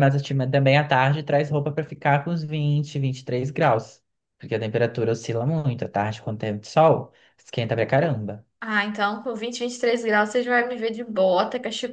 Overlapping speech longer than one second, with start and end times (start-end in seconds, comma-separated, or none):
none